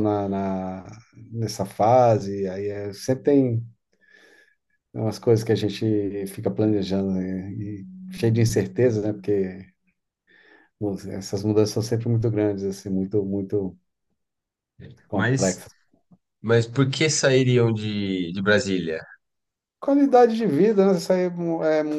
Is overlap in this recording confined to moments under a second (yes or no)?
yes